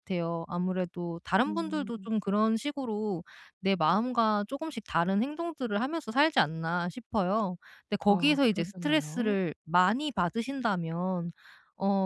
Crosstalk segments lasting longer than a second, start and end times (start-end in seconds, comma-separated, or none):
8.1-9.4